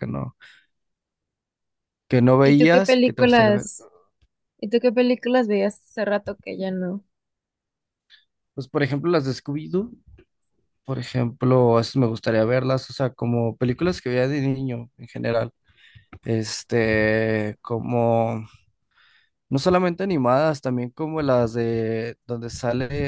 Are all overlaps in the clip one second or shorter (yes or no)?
no